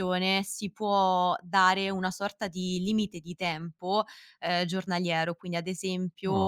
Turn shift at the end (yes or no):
no